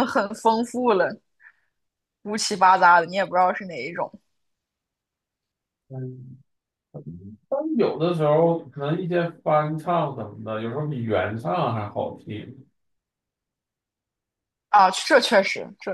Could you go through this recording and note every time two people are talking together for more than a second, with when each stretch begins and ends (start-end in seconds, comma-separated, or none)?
none